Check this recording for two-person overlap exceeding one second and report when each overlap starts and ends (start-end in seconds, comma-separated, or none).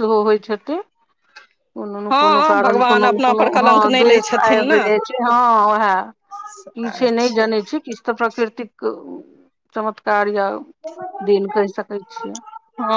2.1-4.8